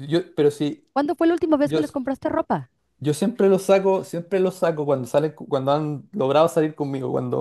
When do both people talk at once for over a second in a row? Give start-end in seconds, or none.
none